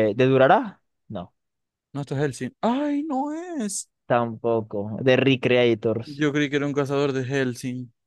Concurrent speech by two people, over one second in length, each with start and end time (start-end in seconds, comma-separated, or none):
none